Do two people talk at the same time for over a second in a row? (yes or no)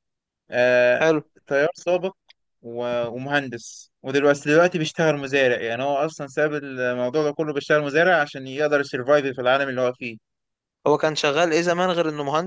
no